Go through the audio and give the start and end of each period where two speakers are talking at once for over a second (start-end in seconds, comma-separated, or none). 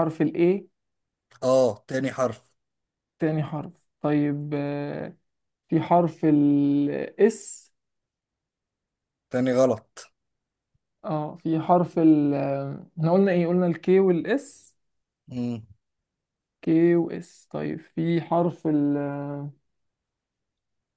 none